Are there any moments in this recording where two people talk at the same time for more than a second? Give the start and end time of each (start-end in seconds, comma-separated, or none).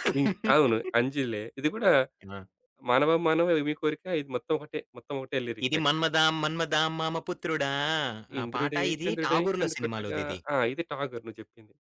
8.4-10.4